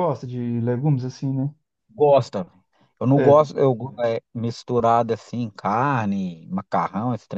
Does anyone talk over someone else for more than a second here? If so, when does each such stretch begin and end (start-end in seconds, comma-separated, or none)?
none